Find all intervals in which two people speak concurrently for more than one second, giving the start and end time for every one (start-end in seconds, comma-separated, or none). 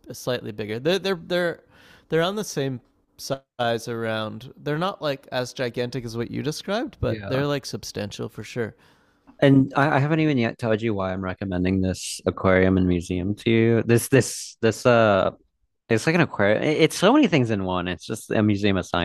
none